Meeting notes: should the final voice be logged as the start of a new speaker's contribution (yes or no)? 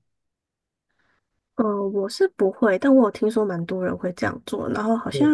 no